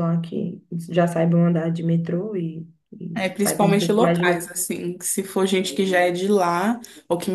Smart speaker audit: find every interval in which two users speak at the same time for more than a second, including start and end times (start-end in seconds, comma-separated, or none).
3.1-4.5